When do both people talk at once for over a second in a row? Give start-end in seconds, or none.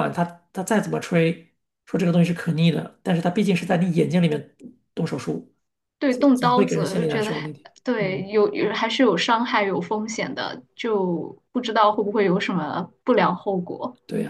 6.1-8.2